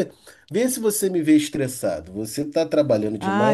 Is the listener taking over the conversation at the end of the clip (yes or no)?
yes